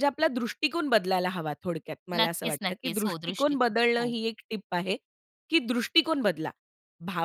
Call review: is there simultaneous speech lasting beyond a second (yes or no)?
yes